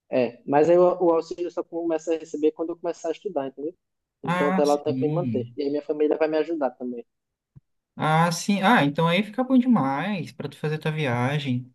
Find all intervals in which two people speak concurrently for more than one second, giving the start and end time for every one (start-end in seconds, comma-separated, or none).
4.2-5.6